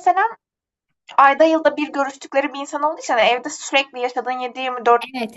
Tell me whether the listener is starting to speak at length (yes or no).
yes